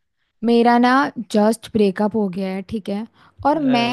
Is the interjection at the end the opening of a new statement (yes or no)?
no